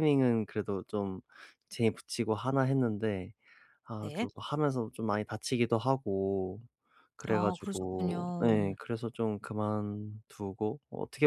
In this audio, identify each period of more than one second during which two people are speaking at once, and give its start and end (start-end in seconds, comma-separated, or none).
7.3-8.8